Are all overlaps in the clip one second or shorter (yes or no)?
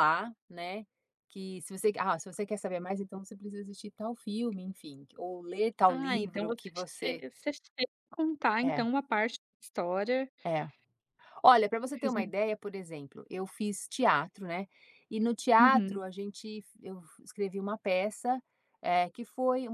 no